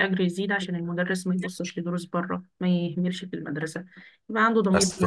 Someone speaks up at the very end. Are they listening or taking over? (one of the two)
taking over